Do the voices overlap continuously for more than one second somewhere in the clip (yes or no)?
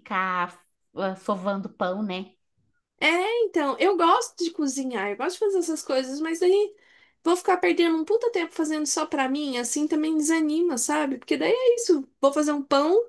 no